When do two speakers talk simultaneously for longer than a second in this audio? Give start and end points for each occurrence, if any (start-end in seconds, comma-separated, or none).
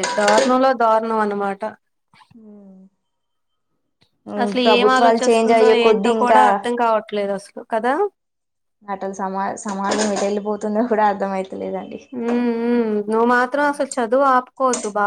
4.6-6.4